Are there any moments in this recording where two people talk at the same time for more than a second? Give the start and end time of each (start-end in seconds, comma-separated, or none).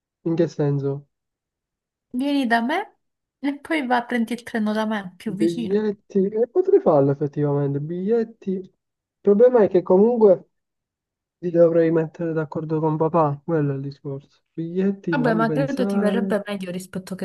15.1-16.5